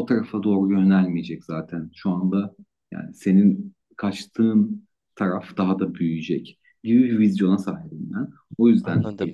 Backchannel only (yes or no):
yes